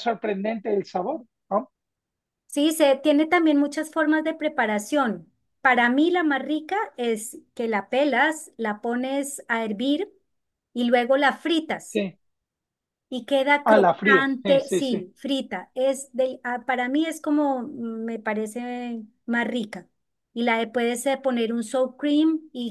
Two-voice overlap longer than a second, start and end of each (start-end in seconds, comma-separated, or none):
13.6-15.1